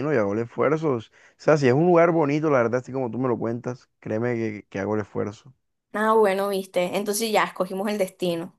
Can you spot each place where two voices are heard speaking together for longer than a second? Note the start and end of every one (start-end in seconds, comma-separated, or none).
none